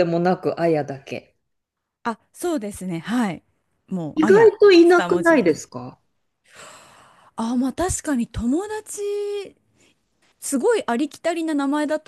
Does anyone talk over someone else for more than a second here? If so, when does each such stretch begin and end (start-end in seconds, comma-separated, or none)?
4.1-5.6